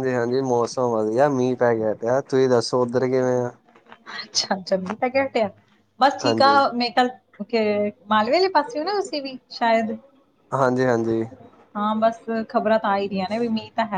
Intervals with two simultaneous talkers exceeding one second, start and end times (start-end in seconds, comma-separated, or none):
none